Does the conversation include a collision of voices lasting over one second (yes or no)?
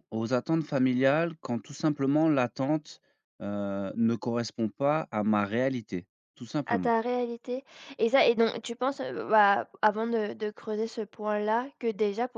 no